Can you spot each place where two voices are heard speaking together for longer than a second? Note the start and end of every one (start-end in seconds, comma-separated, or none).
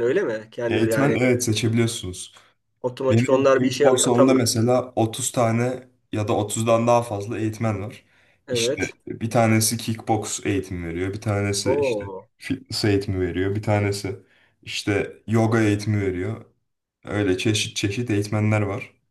3.1-4.5